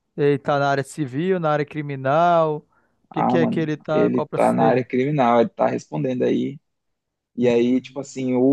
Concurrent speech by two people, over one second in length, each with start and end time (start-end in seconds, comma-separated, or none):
3.1-4.9